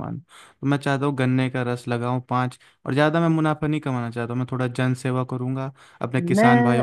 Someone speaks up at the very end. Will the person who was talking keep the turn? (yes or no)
no